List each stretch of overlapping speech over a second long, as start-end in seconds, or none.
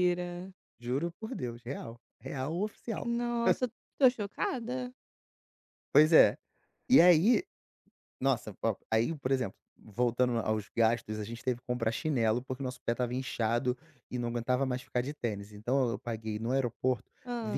none